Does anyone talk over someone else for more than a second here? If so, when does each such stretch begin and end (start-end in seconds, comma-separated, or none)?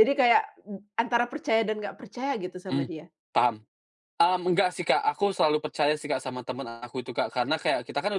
none